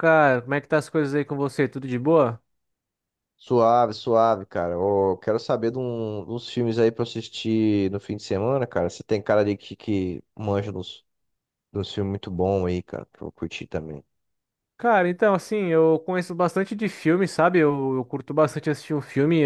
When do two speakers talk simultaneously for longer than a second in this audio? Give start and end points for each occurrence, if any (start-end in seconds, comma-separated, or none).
none